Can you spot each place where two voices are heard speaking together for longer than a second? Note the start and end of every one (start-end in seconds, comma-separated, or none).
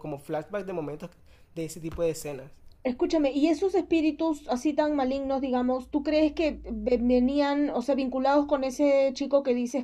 none